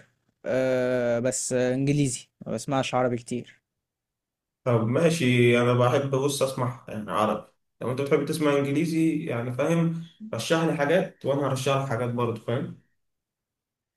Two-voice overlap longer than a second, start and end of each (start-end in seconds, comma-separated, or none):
none